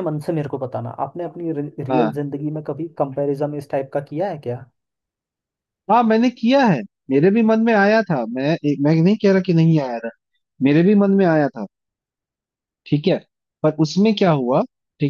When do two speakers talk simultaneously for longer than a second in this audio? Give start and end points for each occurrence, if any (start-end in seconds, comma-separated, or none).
none